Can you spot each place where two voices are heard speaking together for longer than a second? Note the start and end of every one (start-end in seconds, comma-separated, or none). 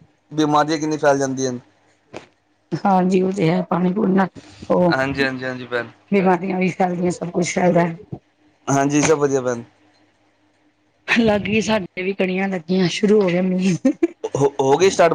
none